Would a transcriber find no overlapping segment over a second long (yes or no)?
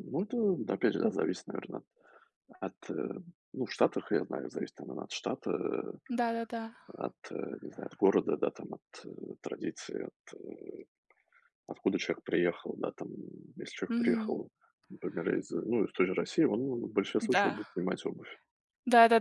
yes